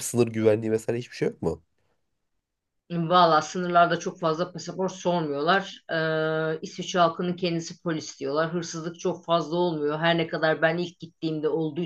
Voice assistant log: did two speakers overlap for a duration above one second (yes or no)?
no